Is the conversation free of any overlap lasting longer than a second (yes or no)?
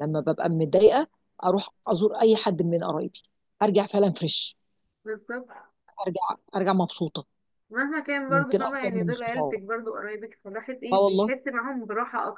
no